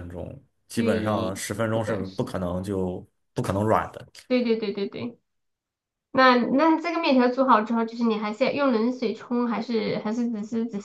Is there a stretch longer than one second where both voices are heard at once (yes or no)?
yes